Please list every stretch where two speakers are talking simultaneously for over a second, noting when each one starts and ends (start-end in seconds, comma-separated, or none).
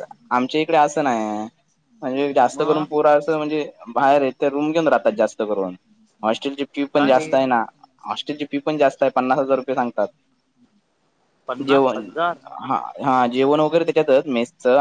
none